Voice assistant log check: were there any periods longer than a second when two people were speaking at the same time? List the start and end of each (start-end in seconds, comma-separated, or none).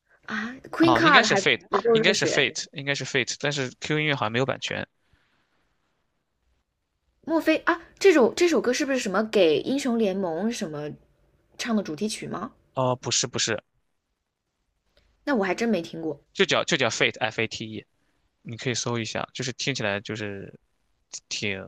0.8-2.5